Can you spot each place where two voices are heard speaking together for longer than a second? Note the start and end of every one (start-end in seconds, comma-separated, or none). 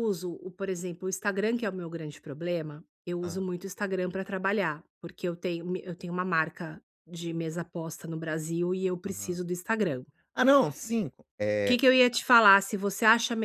none